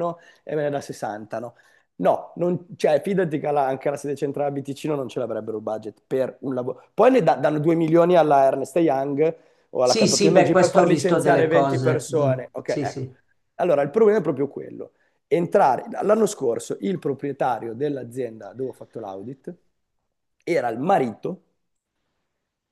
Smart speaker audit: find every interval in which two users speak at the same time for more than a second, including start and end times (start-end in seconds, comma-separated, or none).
9.8-13.1